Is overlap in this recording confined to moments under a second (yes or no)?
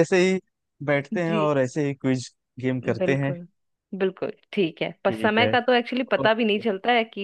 yes